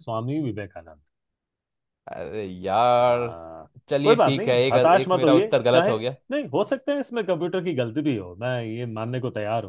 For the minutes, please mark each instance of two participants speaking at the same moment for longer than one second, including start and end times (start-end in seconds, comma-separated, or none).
3.9-5.9